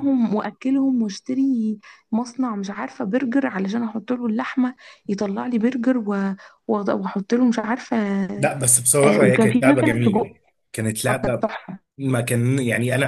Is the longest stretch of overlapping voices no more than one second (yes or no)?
no